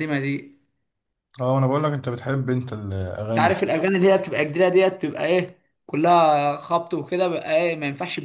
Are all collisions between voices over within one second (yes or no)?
yes